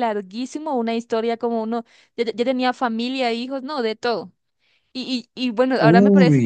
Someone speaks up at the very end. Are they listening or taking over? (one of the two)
listening